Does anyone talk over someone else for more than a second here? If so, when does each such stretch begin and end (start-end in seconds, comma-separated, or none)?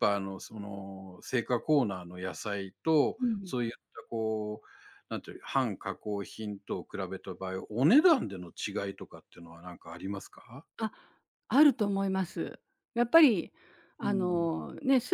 none